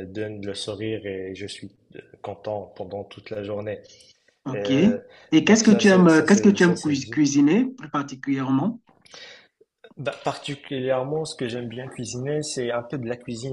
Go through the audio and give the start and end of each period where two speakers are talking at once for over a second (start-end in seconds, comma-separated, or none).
5.4-7.3